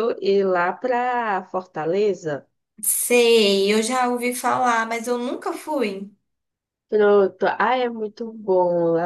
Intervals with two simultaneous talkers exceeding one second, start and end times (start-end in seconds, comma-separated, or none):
none